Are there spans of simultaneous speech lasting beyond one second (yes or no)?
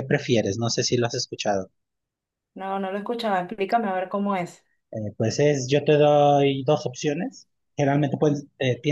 no